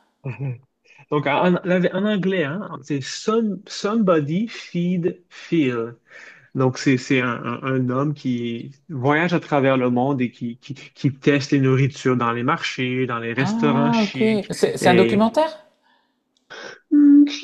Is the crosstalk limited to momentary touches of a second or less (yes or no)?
no